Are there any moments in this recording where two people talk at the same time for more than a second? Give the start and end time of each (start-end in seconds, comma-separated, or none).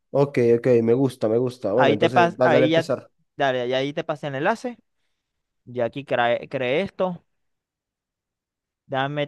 1.8-3.0